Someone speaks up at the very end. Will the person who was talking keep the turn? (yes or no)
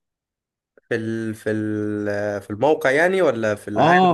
no